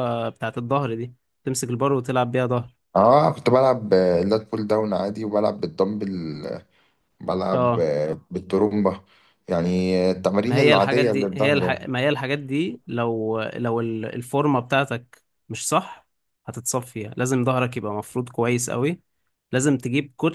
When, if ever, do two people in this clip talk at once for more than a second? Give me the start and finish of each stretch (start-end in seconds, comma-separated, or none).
10.4-11.9